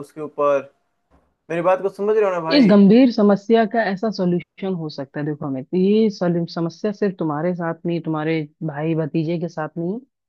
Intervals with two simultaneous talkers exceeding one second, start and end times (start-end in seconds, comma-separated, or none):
none